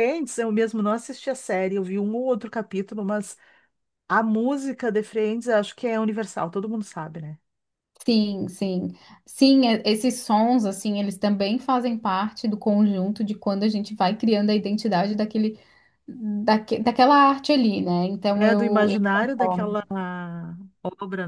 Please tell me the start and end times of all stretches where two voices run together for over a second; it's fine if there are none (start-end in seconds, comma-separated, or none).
18.3-19.8